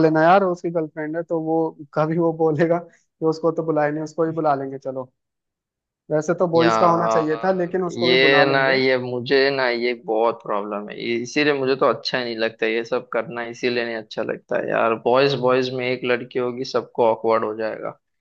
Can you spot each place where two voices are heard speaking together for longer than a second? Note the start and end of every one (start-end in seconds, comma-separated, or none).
6.5-8.8